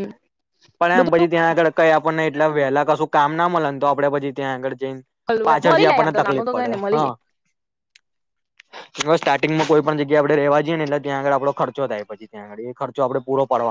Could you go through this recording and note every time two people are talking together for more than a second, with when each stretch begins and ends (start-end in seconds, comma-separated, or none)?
5.5-7.1